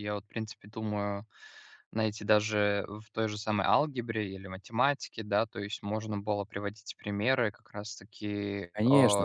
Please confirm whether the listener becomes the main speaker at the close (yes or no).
yes